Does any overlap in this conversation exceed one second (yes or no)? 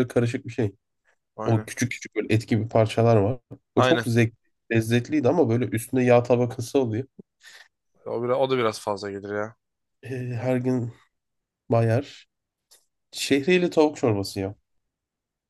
no